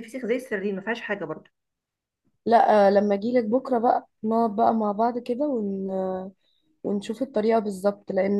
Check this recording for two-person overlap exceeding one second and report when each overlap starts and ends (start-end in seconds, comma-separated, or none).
none